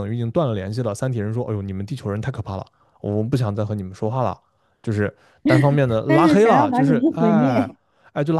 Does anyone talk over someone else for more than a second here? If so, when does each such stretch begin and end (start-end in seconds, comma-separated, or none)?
6.0-7.7